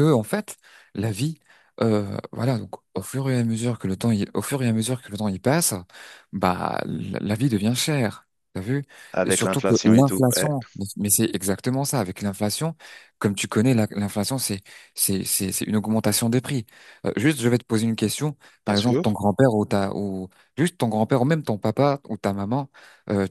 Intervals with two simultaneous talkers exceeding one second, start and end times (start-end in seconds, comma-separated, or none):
9.2-10.5